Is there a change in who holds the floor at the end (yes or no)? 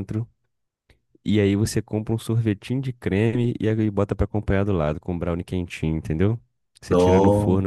no